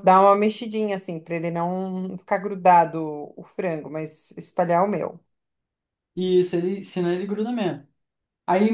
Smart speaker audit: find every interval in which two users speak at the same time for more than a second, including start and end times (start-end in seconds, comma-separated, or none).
none